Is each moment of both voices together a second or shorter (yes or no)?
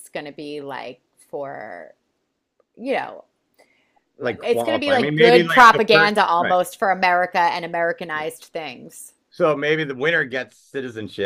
no